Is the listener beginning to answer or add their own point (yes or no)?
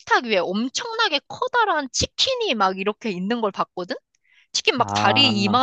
no